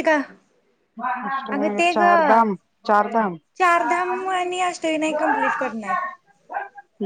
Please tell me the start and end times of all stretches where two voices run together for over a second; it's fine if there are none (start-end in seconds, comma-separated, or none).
none